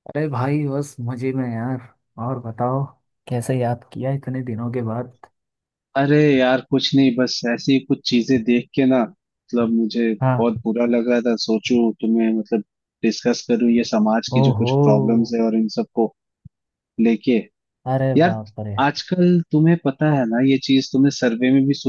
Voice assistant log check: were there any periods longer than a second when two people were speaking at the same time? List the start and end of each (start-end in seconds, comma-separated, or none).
none